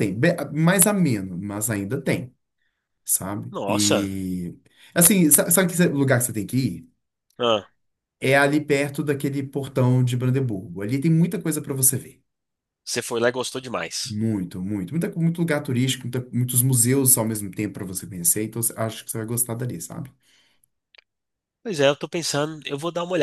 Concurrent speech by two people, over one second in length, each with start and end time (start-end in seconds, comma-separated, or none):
none